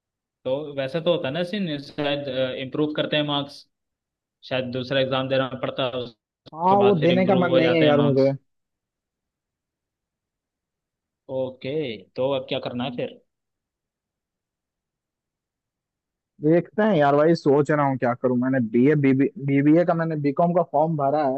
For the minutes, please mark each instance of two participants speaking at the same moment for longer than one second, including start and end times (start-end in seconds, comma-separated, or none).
6.5-8.3